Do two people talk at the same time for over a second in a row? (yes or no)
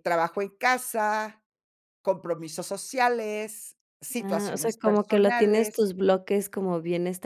yes